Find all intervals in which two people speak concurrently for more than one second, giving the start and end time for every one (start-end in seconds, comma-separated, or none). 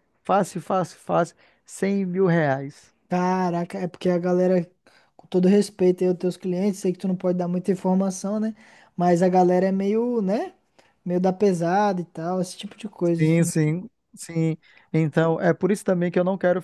none